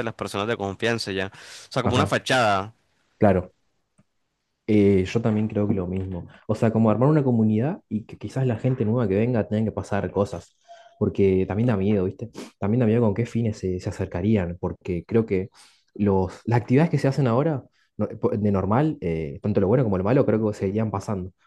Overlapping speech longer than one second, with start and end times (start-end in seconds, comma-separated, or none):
none